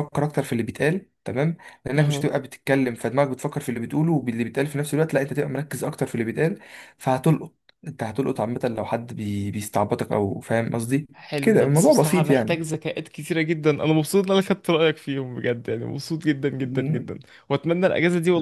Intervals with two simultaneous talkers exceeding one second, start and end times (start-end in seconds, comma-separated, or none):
11.1-12.6